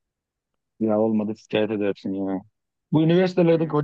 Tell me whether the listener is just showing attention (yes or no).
yes